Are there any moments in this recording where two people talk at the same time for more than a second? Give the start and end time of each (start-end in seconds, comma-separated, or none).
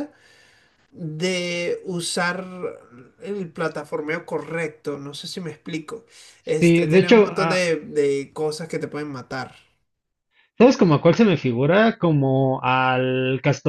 6.4-7.7